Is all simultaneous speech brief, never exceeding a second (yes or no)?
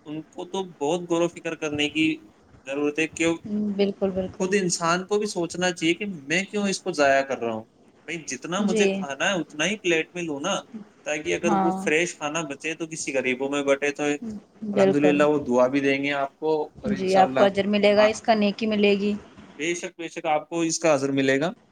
yes